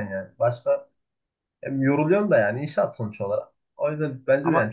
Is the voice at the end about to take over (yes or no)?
no